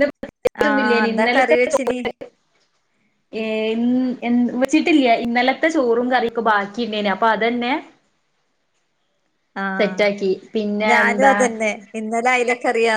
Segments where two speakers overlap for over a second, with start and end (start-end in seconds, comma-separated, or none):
0.6-2.0